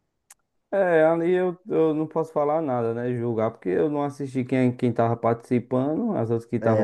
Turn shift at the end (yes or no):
yes